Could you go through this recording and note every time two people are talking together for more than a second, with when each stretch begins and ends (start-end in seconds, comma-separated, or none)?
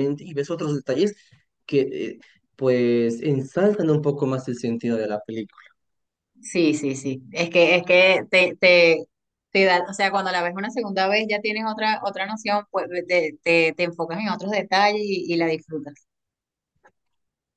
none